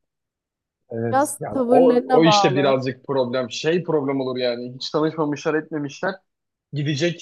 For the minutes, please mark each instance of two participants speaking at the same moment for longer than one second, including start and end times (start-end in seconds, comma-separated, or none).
1.1-2.8